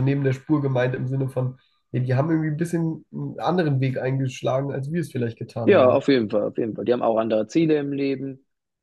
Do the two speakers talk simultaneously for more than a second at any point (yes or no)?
no